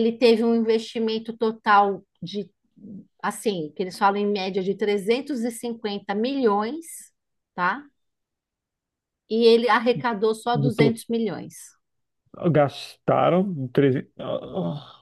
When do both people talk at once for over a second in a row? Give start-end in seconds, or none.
none